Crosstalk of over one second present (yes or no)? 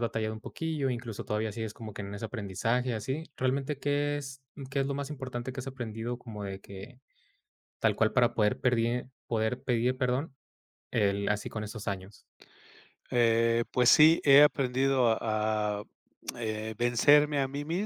no